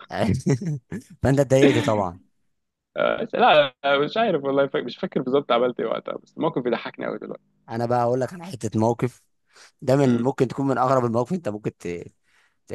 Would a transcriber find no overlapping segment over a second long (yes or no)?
yes